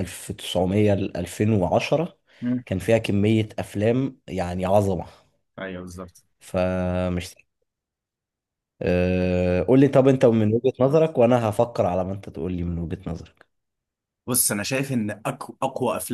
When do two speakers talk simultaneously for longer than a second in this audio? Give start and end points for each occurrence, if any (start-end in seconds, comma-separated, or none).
none